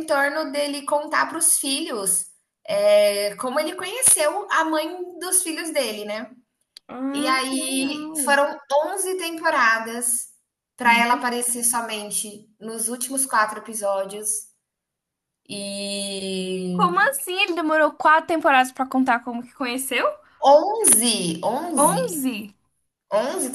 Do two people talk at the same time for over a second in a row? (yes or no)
yes